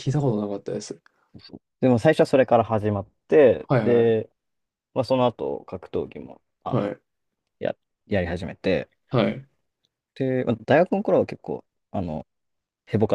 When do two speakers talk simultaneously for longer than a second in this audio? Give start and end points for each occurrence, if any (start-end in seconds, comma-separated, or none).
none